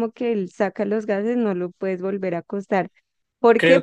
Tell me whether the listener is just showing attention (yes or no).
no